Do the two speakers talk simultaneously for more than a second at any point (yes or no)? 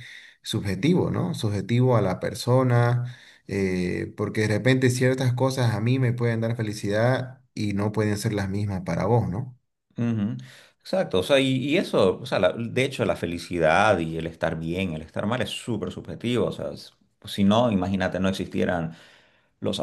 no